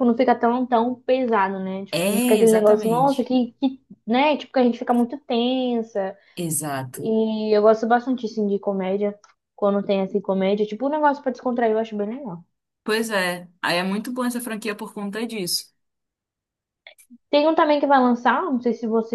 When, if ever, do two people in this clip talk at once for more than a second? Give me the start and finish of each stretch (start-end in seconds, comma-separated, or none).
1.9-3.3